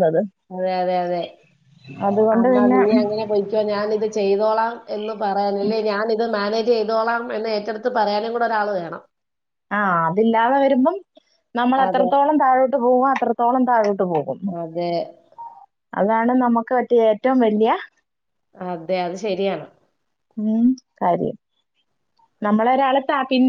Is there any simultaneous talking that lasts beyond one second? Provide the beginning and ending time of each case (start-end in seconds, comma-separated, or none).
none